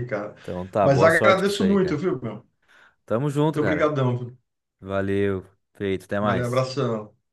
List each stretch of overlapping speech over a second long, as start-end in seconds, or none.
0.8-2.0